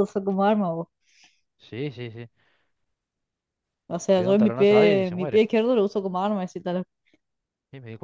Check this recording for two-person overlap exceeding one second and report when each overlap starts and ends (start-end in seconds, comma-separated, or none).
4.2-5.5